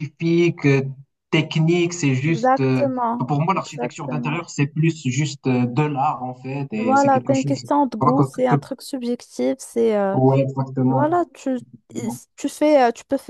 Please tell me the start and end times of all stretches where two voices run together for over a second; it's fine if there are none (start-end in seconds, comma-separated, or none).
2.3-4.4, 6.8-8.6